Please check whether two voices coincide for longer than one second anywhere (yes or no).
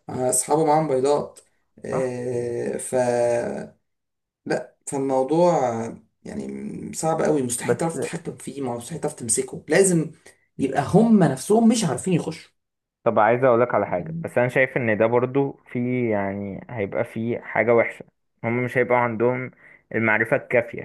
no